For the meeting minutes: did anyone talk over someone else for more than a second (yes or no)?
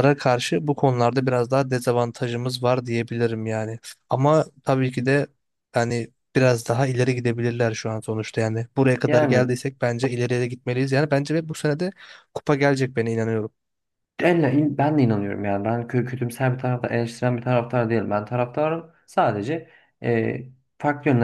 no